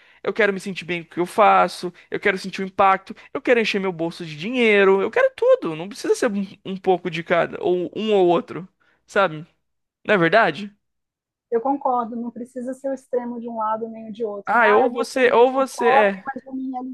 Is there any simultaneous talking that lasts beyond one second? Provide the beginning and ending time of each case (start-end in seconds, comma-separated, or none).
14.4-16.3